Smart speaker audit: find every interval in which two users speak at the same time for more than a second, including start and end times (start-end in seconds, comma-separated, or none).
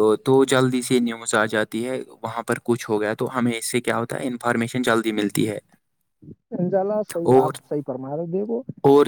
none